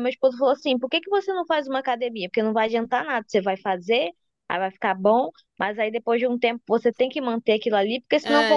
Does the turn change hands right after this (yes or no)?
yes